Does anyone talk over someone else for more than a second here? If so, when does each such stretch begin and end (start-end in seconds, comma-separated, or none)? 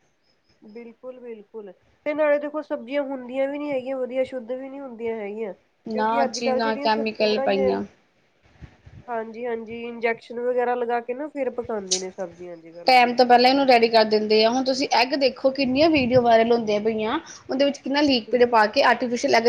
5.9-7.7